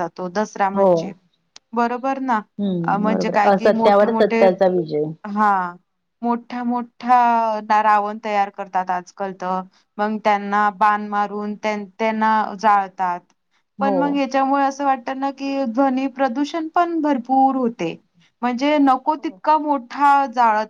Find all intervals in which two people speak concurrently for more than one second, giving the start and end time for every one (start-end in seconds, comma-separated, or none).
3.0-4.5